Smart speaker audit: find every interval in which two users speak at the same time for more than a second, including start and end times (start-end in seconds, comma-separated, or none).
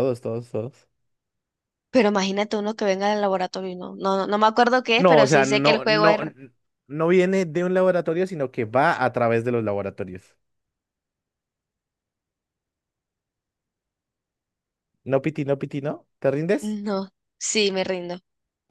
5.0-6.2